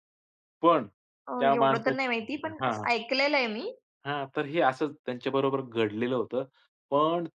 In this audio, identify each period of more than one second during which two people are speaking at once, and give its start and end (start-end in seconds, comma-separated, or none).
1.4-2.9